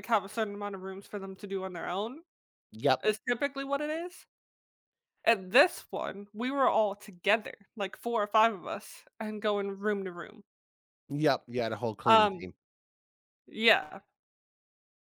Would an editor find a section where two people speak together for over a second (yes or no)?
no